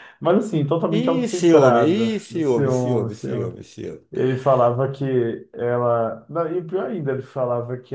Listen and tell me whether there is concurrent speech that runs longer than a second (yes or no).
yes